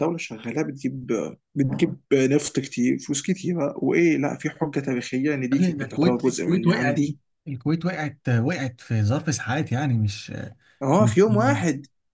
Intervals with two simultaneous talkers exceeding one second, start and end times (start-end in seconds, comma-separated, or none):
5.5-7.0